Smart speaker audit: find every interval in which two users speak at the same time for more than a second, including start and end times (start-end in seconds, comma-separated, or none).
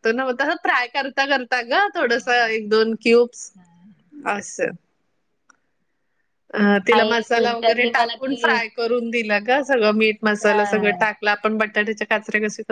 6.9-8.6